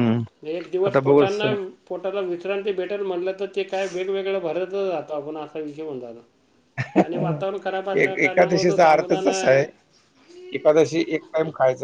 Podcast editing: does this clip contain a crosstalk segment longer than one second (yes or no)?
yes